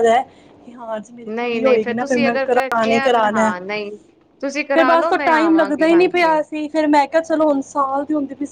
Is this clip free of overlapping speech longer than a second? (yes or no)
no